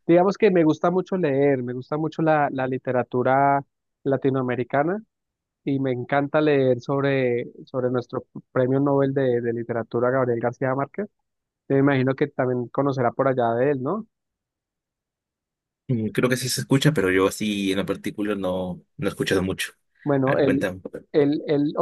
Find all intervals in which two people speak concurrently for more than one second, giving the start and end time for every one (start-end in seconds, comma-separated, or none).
none